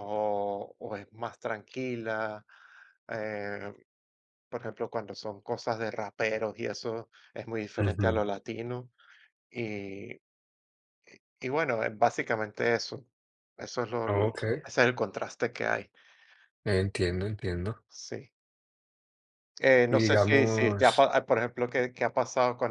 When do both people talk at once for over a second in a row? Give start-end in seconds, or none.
19.9-21.1